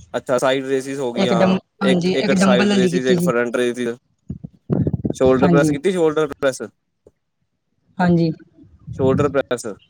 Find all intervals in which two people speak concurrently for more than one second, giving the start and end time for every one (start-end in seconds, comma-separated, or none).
1.2-3.3